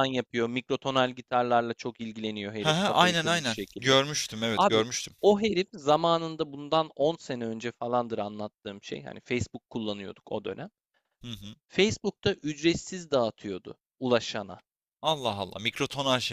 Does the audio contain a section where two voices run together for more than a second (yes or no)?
yes